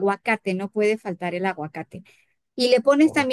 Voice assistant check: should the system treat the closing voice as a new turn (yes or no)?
no